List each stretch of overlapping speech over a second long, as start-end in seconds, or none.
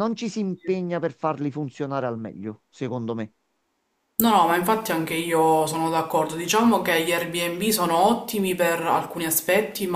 none